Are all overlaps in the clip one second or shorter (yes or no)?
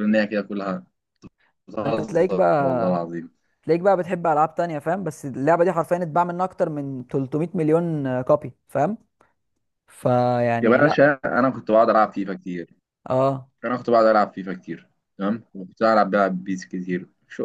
no